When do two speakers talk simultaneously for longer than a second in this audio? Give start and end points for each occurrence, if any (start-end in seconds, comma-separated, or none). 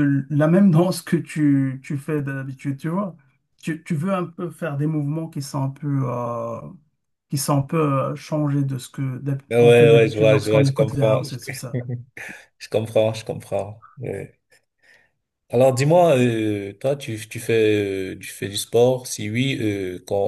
9.5-11.4